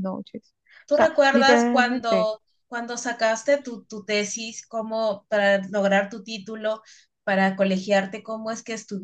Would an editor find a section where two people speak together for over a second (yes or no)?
yes